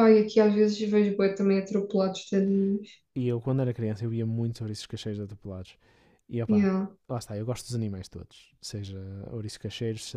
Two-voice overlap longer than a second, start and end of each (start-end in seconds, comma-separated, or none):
none